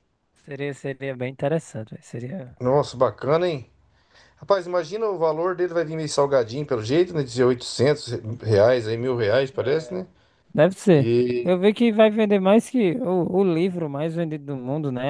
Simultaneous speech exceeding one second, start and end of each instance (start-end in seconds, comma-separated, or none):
none